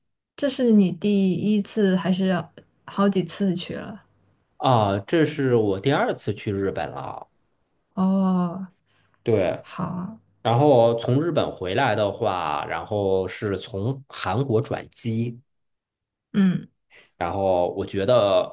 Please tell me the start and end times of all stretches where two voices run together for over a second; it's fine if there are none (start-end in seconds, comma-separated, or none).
none